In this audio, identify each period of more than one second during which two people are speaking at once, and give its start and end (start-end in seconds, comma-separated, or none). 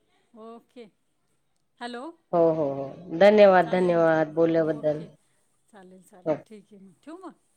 3.3-5.0